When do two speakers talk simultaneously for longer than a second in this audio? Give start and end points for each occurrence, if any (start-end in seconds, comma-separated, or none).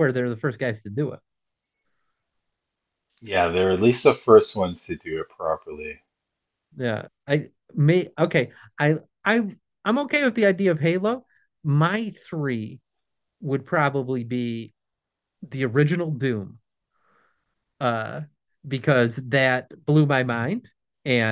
none